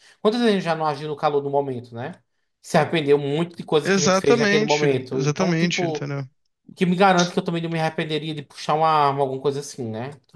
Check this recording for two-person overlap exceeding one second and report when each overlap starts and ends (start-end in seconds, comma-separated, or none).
3.8-6.1